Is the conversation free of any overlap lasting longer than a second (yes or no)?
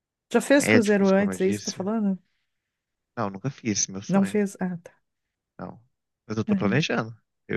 no